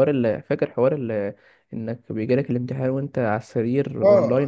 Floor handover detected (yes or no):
yes